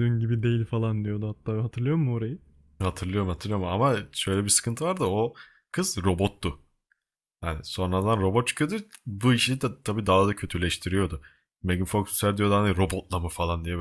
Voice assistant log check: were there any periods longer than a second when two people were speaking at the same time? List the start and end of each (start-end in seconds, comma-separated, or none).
none